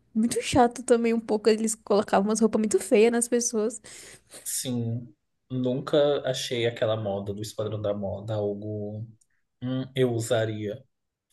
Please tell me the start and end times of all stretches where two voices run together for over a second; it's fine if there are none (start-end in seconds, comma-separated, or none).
none